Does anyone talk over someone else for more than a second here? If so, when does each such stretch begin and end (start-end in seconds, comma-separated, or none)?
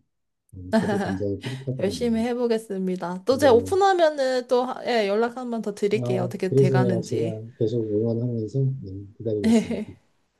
6.0-7.4